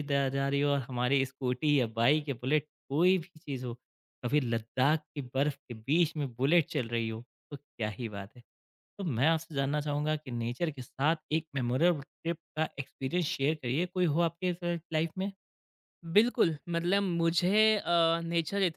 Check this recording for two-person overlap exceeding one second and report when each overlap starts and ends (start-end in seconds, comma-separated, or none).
none